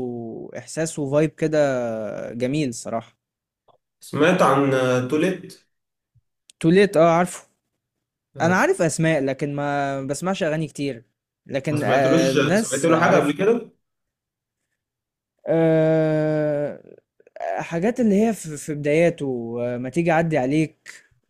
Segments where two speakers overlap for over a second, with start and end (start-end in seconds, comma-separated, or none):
11.7-13.3